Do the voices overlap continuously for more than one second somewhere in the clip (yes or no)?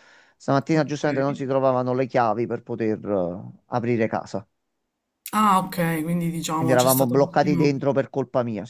yes